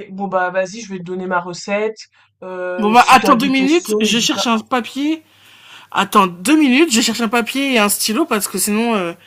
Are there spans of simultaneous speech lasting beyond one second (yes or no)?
yes